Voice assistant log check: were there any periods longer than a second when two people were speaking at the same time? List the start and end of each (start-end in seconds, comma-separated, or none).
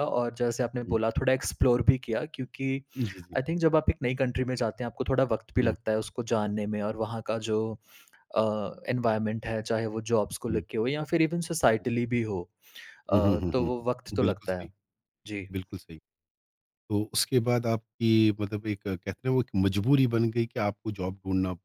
13.2-14.7